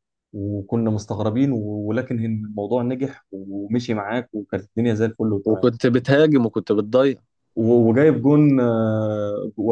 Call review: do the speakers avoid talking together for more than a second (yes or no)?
yes